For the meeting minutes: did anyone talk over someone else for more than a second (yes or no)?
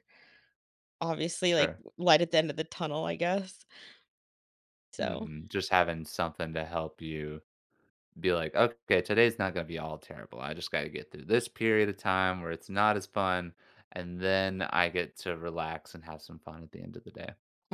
no